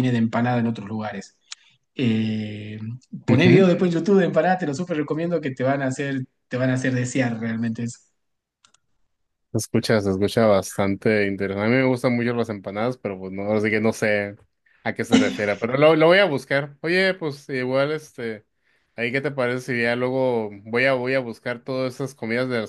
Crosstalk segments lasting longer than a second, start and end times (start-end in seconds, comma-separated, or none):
none